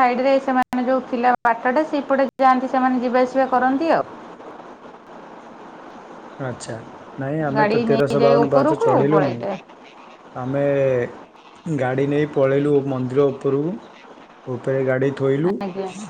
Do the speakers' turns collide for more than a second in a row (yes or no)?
yes